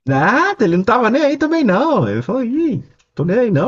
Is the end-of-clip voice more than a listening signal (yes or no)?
no